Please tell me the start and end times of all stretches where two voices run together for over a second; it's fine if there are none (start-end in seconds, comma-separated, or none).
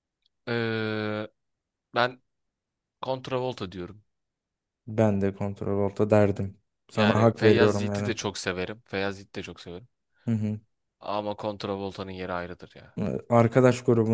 6.9-8.1